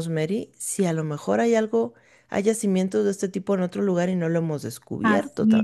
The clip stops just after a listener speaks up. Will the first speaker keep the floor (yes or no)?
no